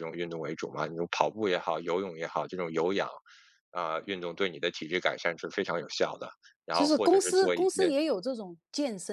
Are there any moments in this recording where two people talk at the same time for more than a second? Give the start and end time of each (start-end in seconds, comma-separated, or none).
6.7-7.9